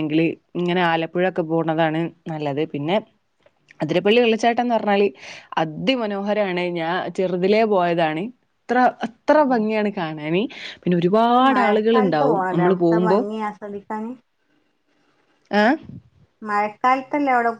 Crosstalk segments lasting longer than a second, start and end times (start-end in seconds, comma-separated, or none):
11.3-13.2